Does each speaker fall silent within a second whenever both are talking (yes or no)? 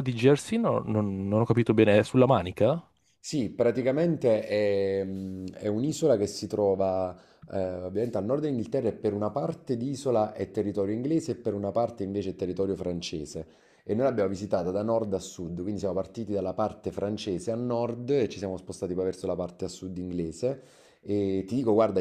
yes